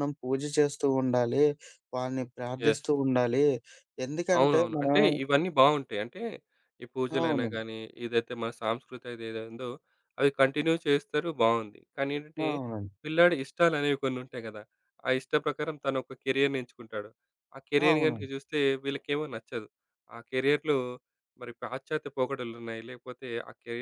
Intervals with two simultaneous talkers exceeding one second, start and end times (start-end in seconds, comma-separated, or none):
none